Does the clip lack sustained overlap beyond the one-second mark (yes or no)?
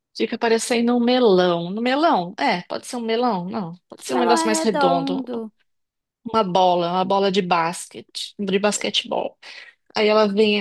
no